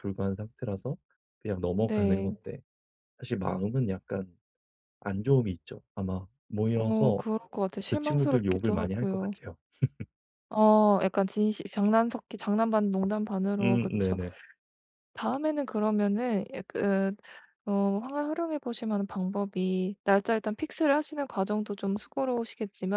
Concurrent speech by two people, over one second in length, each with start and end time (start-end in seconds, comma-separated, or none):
7.9-9.3